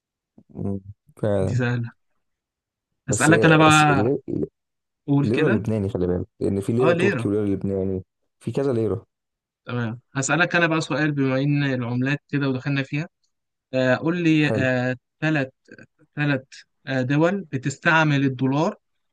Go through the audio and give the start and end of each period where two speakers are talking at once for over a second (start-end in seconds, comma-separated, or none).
none